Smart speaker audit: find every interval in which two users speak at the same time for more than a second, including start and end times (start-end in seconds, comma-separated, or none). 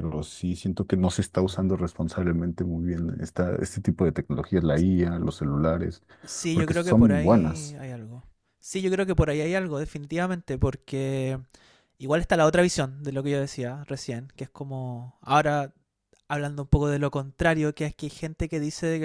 6.5-7.8